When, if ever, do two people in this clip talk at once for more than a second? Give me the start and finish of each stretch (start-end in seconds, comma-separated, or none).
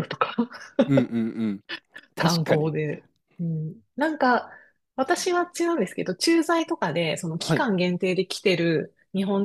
none